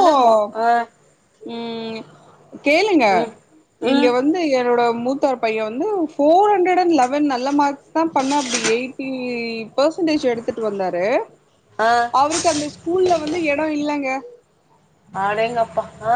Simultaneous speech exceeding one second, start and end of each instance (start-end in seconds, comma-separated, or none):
none